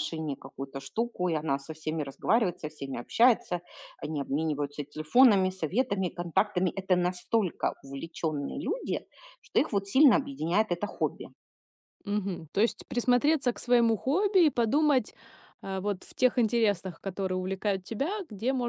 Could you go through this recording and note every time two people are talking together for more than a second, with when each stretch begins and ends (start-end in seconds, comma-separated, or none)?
none